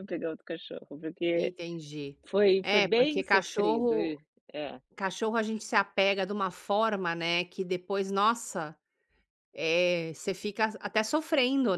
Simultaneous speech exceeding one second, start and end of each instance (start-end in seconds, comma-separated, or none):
2.6-4.1